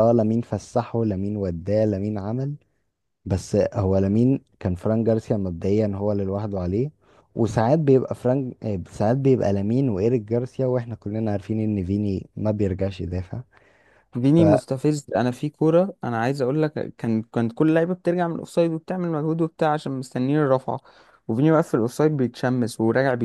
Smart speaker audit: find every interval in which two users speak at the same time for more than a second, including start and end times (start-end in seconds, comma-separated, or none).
none